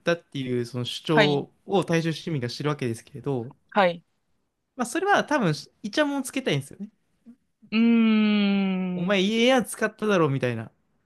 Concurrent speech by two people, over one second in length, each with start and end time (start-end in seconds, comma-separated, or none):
none